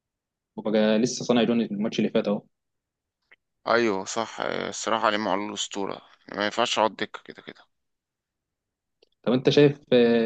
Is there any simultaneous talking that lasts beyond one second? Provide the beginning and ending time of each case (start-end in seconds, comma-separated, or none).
none